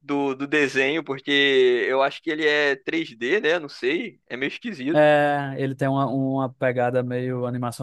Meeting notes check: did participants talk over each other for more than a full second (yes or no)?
no